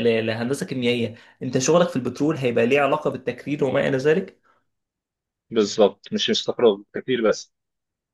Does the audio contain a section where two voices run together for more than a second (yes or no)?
no